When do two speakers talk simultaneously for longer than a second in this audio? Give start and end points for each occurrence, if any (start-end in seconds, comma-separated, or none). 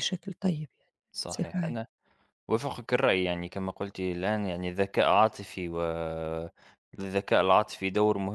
none